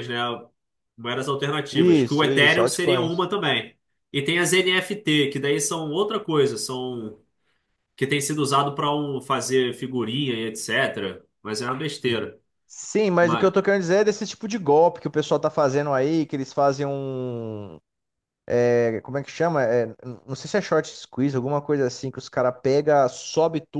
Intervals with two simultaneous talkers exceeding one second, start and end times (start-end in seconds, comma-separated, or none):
1.7-3.3